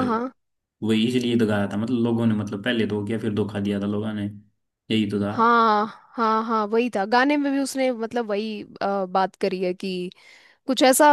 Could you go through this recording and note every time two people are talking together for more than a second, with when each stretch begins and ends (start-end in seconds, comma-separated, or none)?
none